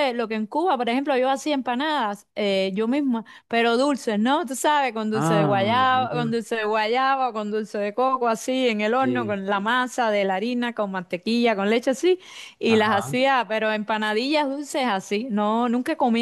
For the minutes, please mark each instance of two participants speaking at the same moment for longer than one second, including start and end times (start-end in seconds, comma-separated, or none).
5.1-6.3